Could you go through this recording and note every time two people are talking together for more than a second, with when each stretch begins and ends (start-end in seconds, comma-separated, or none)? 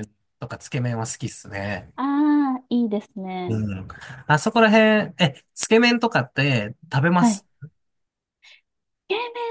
none